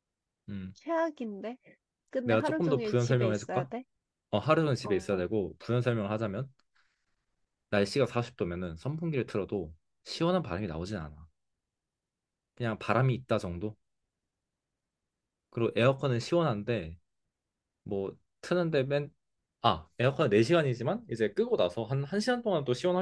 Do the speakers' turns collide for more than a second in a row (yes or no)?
yes